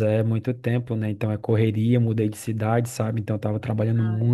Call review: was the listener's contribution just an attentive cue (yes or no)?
yes